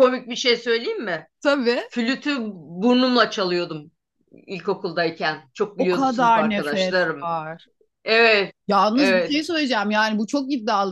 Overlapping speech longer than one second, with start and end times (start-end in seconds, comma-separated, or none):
5.8-7.3